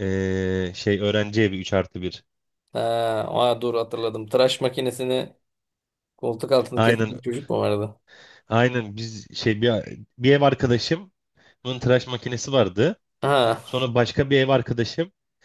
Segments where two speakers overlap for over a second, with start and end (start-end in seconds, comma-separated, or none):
none